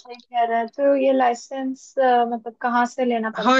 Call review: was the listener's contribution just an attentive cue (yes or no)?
no